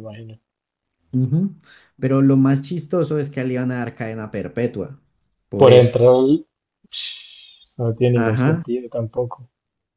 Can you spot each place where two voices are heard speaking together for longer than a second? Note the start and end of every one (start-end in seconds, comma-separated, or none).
none